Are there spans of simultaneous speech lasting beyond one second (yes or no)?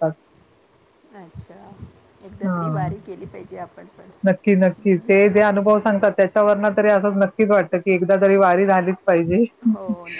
no